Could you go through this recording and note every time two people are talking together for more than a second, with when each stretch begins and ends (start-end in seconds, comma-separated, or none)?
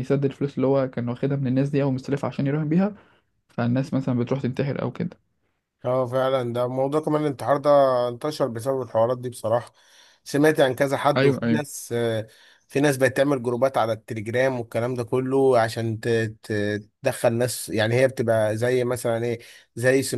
none